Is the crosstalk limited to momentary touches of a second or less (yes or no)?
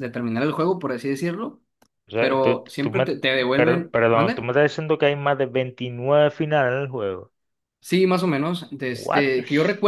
no